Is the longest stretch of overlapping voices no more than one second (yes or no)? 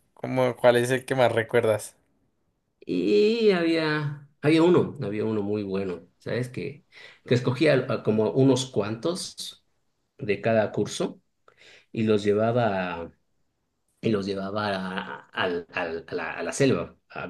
yes